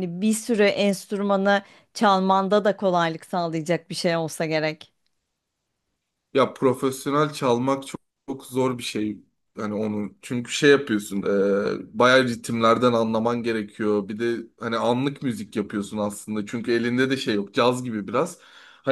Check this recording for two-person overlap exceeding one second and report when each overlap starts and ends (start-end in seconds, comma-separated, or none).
none